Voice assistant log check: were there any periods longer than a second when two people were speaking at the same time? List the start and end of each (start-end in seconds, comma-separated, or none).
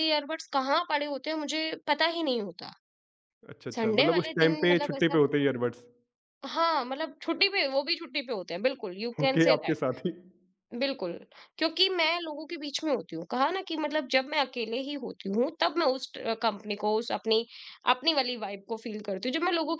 3.7-5.2